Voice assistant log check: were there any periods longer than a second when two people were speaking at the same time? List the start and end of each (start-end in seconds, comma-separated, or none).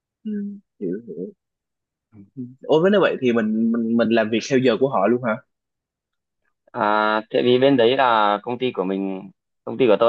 none